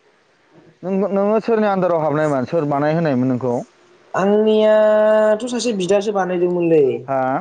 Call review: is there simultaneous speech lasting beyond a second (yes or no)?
no